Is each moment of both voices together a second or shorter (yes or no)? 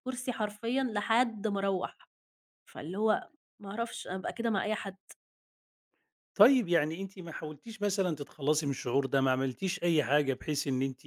yes